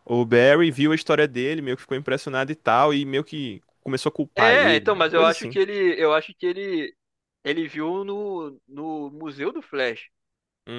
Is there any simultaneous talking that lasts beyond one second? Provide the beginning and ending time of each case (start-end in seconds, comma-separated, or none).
4.4-5.6